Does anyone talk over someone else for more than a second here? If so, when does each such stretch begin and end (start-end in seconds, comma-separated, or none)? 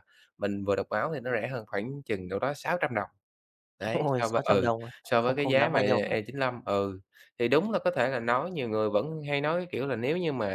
3.9-6.1